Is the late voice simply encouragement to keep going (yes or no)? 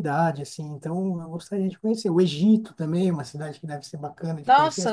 no